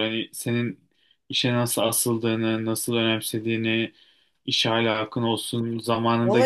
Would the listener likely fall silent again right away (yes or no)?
no